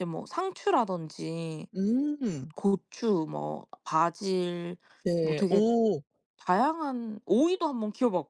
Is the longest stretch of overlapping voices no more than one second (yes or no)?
yes